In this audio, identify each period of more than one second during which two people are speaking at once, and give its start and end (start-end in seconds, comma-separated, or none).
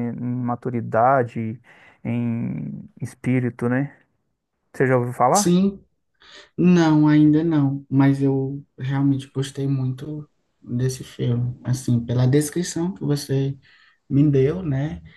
none